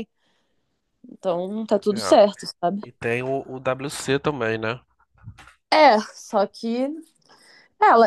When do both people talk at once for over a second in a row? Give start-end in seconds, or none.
none